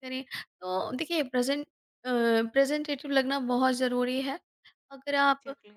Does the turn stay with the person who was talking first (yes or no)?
yes